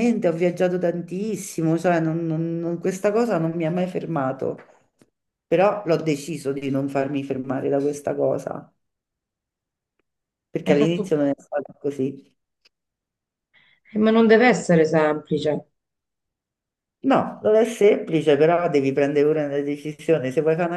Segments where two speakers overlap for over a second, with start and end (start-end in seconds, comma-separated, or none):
none